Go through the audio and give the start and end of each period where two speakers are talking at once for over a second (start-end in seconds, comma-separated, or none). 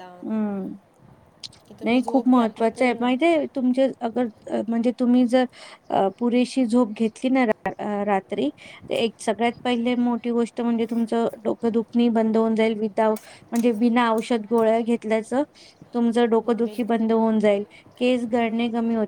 1.8-3.1